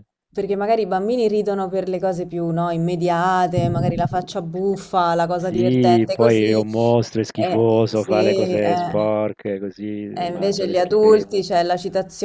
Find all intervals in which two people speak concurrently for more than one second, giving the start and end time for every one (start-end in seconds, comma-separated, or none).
5.4-6.6, 7.3-9.1, 10.2-11.4